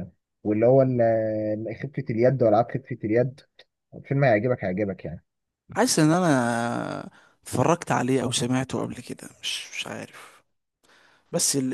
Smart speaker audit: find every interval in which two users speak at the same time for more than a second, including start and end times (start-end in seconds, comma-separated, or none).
none